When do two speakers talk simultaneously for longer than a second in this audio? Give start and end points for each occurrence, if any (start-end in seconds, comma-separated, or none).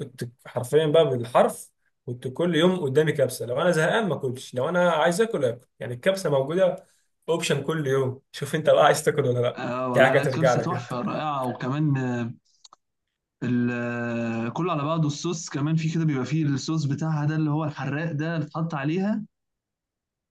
9.6-10.9